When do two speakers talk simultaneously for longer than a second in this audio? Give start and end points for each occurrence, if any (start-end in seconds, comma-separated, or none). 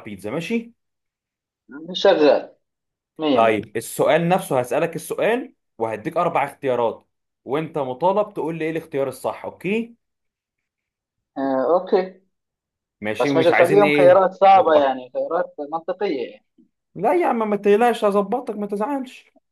13.2-15.0